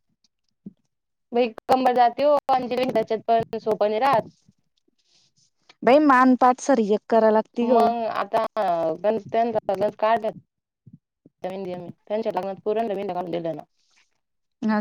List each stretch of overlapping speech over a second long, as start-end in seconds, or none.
none